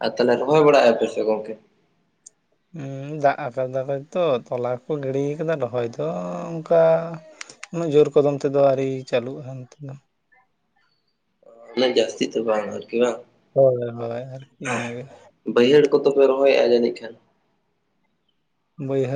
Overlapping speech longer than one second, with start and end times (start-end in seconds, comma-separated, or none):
none